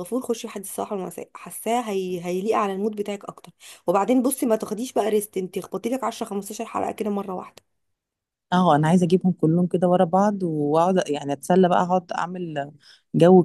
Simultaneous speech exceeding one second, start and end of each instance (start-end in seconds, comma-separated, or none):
none